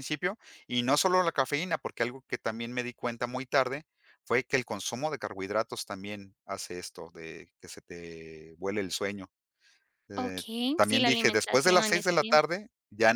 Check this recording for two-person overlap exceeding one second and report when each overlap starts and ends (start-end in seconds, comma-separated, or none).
10.2-12.3